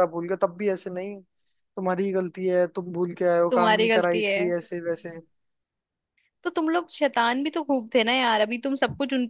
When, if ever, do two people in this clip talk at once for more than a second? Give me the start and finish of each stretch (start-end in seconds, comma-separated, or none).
3.5-5.2